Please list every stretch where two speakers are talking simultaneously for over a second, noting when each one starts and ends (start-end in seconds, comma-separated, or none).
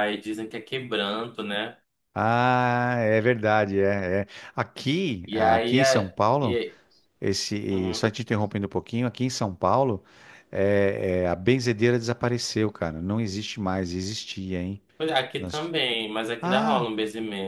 5.2-6.6